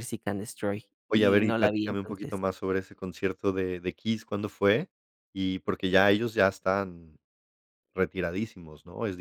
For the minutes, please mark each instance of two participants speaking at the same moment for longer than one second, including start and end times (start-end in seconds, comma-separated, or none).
1.1-2.4